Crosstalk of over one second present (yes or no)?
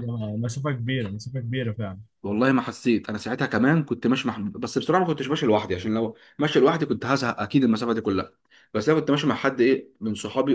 no